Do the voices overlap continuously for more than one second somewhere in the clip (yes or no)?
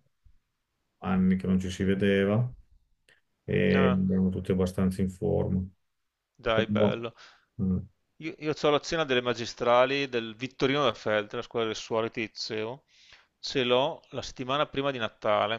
no